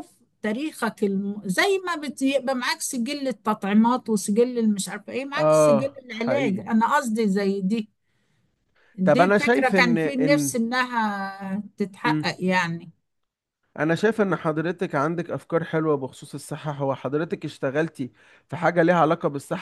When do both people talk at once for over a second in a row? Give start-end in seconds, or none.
5.4-6.6, 9.0-10.6